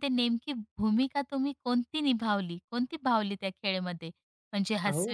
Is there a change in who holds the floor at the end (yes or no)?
no